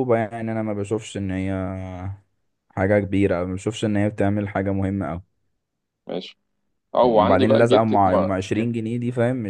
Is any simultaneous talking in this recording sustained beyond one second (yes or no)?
yes